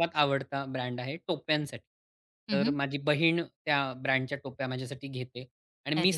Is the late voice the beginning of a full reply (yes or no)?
no